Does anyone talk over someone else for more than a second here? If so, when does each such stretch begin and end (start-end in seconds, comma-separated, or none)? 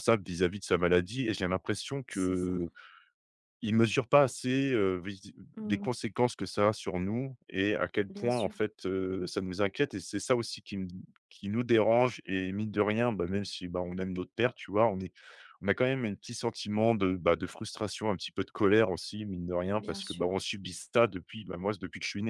none